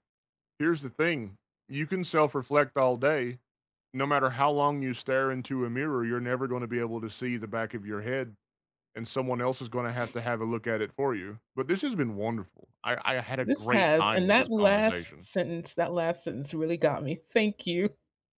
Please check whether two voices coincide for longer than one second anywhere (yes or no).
yes